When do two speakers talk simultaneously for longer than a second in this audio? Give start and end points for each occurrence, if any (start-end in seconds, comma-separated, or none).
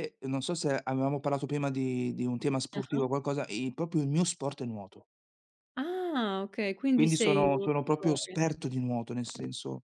6.9-8.4